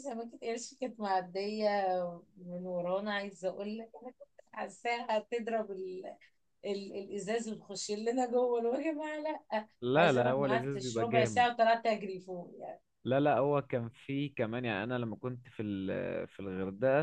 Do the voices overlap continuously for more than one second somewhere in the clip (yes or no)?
yes